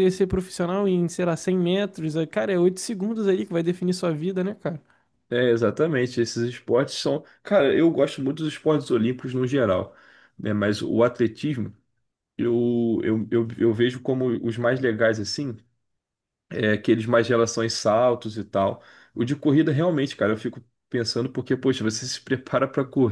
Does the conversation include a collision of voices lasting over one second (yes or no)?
no